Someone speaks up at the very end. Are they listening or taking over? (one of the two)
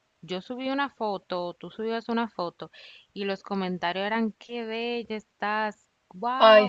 listening